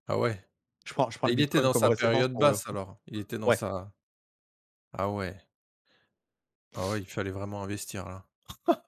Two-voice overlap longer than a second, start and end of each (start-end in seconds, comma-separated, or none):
1.2-2.8